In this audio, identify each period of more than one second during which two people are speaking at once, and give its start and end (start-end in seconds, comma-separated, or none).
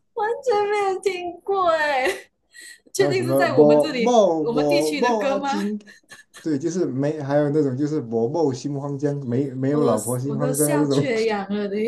3.0-5.6, 9.7-11.0